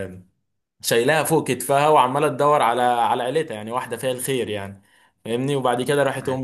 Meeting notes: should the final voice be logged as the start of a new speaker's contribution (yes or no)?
no